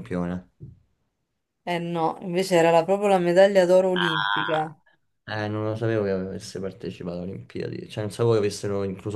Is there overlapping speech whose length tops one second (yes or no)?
no